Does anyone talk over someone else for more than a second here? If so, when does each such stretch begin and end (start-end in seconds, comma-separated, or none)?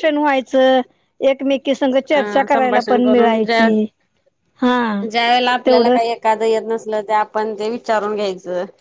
2.1-3.7